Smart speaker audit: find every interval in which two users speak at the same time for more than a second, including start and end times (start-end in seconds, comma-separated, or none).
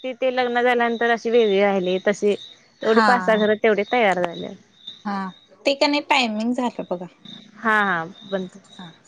none